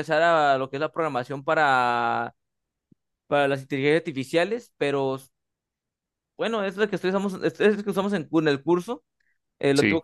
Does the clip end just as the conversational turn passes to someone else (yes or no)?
no